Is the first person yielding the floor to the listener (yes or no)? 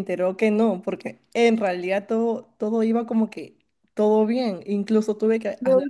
no